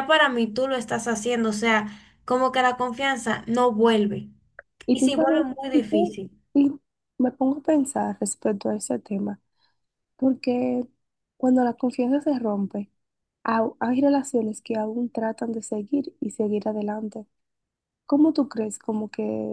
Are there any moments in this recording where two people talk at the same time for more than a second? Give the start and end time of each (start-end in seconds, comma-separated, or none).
4.9-6.2